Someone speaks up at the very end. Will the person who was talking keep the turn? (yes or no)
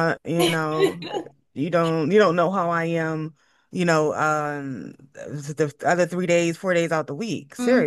no